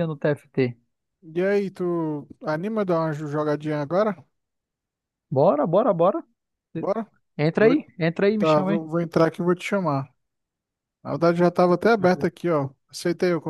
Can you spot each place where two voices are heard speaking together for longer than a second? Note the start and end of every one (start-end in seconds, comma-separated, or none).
none